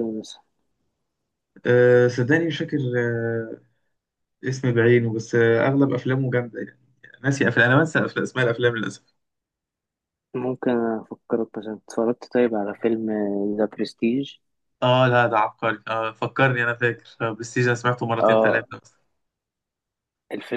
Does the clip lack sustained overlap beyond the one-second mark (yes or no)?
yes